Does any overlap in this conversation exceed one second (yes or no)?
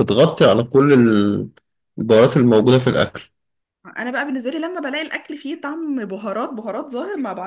no